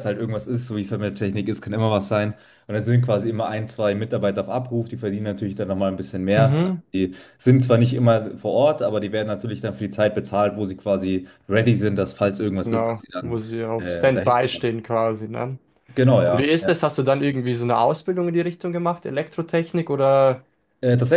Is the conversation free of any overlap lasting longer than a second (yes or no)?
no